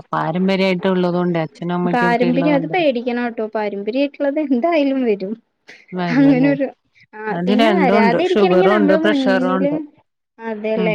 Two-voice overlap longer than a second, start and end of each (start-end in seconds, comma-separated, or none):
7.4-9.7